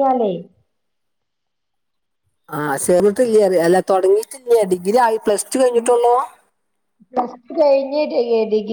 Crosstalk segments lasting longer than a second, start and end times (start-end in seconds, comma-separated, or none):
none